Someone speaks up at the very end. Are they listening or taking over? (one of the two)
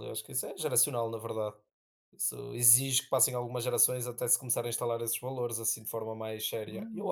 taking over